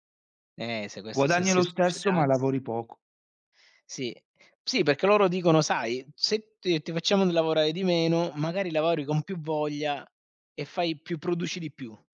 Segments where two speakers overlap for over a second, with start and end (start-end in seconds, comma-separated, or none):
1.1-2.5